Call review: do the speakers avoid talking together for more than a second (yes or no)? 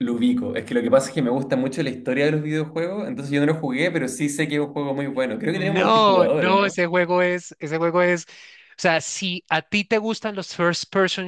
no